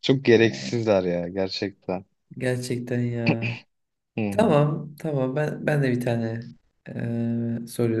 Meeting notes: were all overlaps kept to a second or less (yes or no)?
yes